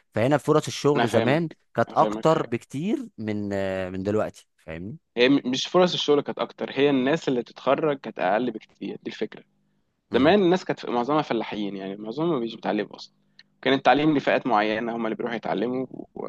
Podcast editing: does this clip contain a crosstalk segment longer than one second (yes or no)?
yes